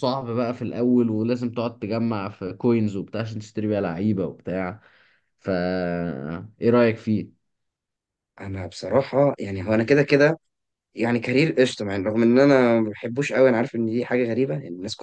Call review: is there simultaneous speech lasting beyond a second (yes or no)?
no